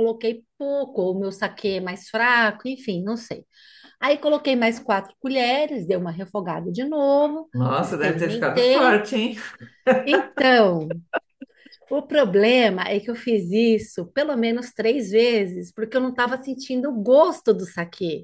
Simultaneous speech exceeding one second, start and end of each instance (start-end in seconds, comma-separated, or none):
7.5-9.0